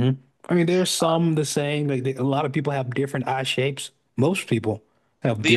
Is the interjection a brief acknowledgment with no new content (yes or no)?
no